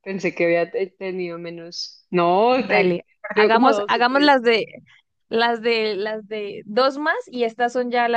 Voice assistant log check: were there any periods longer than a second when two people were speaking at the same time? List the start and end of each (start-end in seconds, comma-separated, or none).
2.5-4.3